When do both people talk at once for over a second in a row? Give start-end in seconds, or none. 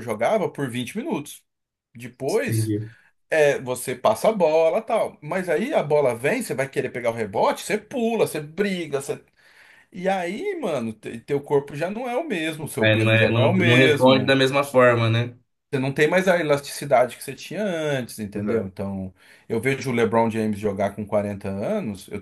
12.8-14.4